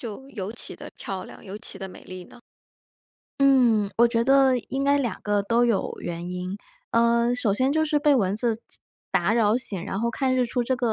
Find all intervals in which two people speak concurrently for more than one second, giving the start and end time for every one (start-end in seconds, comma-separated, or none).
none